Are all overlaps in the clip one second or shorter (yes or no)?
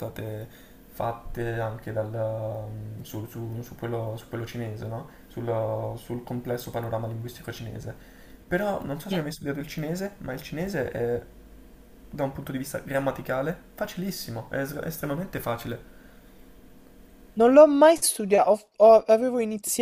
yes